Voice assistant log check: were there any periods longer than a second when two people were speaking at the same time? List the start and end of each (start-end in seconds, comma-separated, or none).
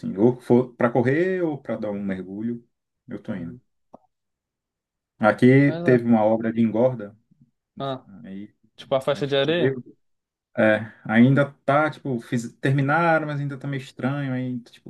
none